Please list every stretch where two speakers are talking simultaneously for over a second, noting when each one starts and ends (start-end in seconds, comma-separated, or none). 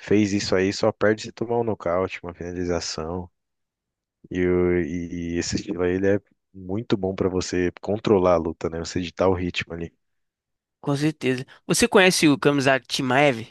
none